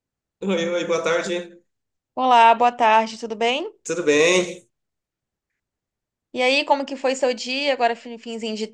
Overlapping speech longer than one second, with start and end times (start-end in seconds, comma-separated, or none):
none